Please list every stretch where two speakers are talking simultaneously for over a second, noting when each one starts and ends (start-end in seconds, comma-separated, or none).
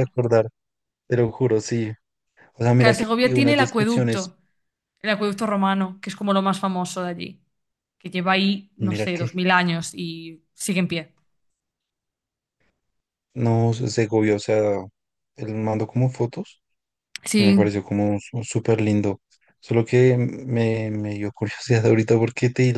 2.8-4.3